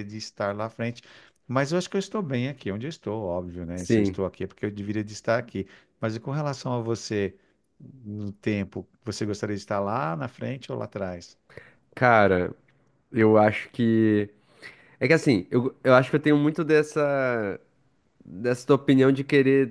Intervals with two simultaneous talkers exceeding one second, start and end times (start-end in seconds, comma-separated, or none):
none